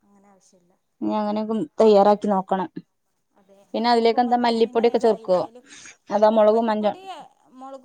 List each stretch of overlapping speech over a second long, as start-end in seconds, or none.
3.7-5.4